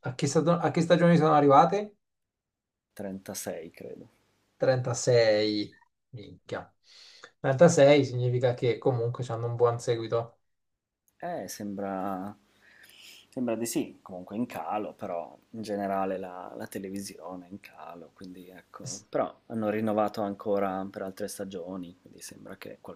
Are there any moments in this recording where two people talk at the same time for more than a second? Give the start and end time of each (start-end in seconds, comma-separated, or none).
none